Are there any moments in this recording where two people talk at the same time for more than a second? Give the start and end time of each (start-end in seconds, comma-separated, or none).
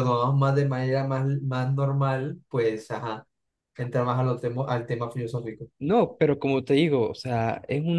none